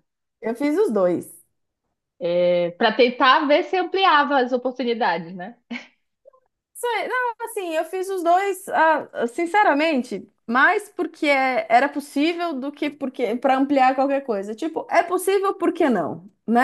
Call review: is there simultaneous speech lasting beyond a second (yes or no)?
no